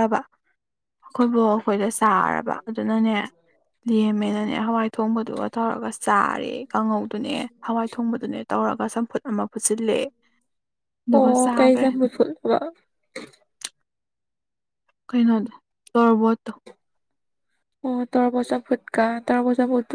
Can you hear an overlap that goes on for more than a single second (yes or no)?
no